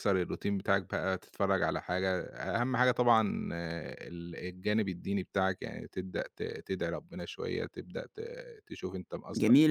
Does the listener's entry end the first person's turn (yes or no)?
yes